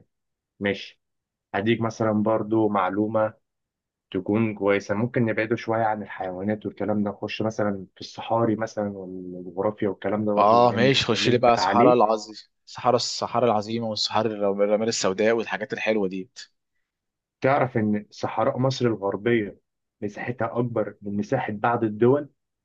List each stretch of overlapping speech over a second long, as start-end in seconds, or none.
10.4-12.0